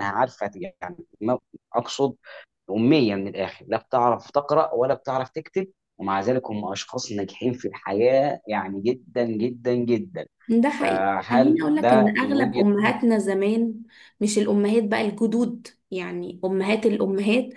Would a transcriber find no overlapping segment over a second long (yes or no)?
no